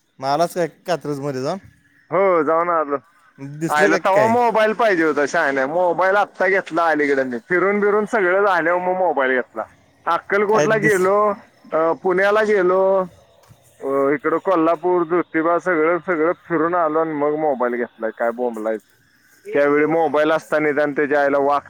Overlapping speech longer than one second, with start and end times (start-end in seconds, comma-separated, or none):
none